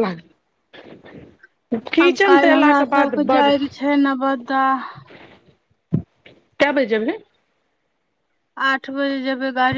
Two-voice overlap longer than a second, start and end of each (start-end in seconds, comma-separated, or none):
2.0-3.5